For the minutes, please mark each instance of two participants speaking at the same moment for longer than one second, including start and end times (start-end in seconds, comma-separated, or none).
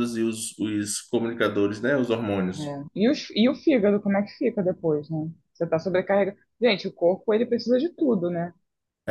none